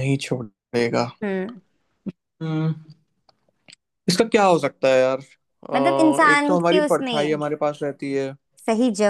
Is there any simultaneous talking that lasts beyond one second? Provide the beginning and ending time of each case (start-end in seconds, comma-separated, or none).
5.7-7.3